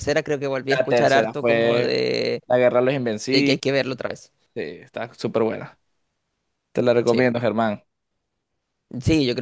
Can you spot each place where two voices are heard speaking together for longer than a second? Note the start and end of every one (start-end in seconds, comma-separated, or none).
0.6-1.9